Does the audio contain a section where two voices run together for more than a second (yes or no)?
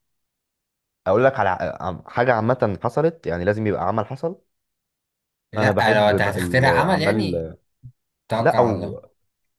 yes